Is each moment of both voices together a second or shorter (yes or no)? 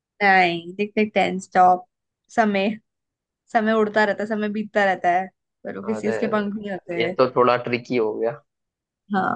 yes